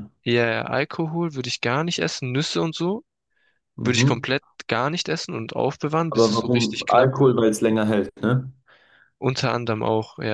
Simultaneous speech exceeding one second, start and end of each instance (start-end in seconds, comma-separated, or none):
6.1-7.4